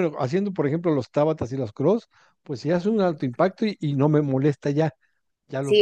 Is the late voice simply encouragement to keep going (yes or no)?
no